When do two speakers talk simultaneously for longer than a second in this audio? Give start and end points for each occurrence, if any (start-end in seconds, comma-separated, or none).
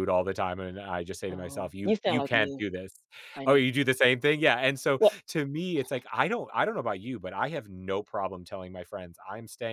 1.3-2.7